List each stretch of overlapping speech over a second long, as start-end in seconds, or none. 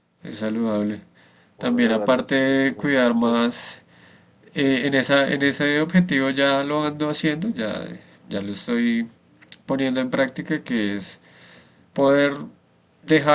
1.6-3.3